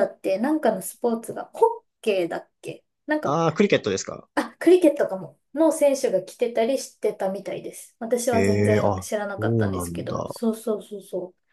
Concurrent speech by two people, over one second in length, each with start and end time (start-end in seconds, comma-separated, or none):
8.3-10.2